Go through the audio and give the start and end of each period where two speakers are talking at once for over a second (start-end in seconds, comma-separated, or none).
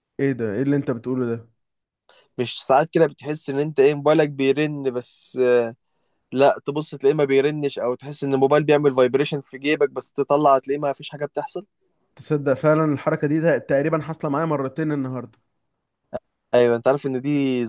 none